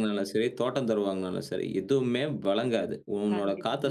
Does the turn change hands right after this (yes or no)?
no